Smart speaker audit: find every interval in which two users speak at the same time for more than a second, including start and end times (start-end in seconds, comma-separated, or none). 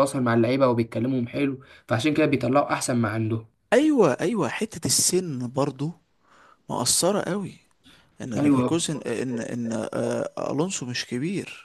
none